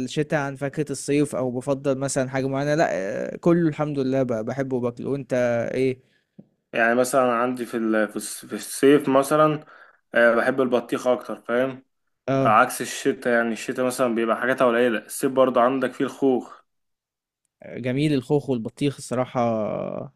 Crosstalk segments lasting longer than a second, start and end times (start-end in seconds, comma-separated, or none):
none